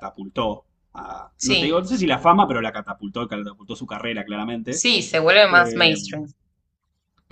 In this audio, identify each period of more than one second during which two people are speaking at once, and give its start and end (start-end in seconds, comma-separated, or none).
none